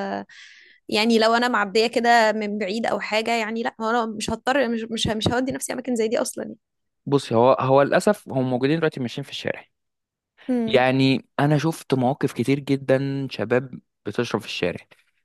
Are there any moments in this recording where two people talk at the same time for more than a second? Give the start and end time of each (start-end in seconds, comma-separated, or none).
none